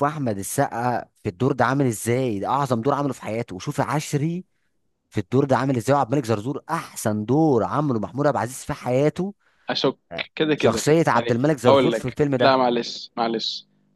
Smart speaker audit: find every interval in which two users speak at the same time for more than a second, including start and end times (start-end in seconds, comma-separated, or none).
10.3-12.6